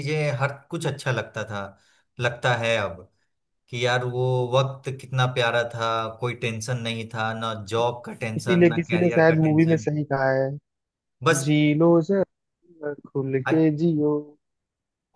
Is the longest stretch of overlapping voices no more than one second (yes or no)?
no